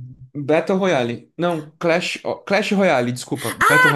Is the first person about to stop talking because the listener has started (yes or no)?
yes